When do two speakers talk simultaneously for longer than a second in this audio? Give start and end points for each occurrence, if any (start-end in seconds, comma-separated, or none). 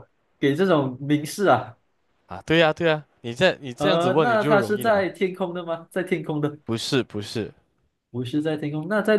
3.8-5.1